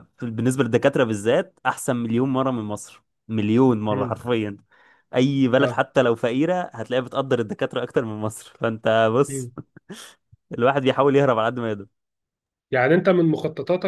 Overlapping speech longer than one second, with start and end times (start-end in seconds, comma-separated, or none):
none